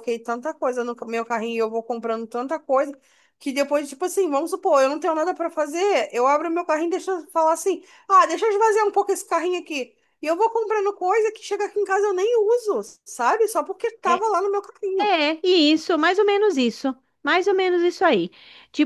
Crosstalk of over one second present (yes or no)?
no